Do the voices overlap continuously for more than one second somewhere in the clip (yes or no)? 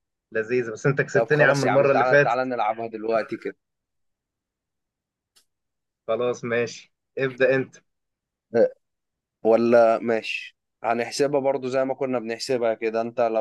yes